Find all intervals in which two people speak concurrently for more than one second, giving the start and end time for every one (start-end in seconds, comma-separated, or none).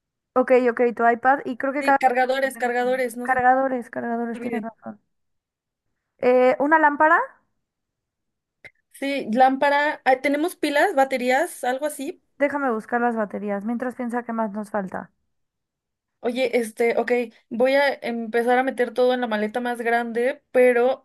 1.8-3.4